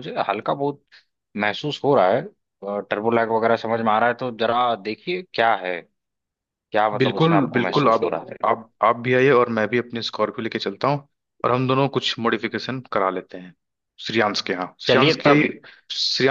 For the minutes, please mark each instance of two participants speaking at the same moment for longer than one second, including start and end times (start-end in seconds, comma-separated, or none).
7.0-8.5